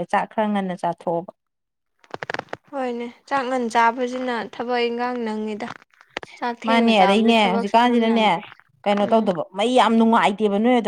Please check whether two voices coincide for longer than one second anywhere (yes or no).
yes